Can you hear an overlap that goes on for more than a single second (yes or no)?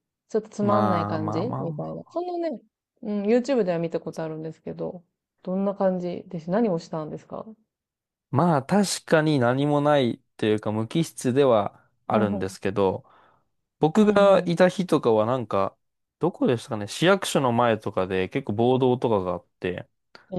yes